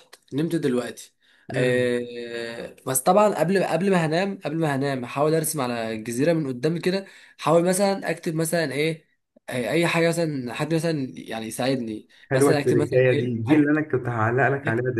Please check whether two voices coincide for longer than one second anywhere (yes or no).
yes